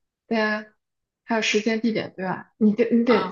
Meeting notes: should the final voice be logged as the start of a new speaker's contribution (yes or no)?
yes